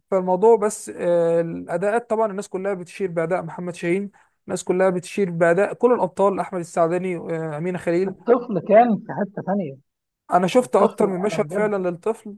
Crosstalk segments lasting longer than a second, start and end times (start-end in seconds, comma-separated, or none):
10.6-11.9